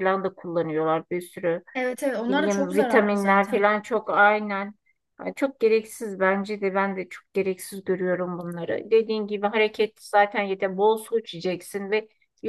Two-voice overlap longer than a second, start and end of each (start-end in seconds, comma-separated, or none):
2.2-3.7